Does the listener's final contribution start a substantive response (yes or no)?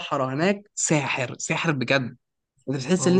no